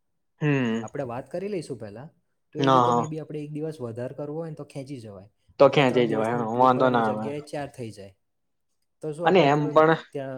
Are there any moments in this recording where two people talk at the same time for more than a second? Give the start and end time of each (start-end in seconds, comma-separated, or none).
5.7-7.3